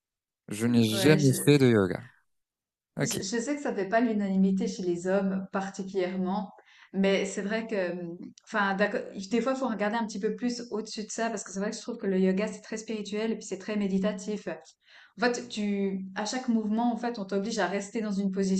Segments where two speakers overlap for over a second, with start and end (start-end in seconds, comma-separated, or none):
none